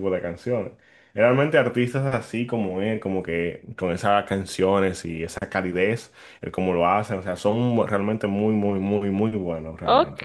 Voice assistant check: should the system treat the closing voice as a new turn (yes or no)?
yes